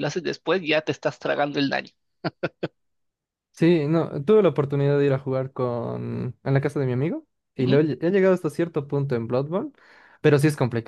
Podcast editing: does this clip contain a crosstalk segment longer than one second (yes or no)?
no